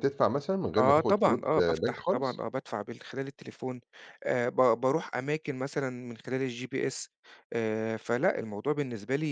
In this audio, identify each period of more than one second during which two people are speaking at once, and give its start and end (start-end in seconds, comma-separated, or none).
0.8-2.5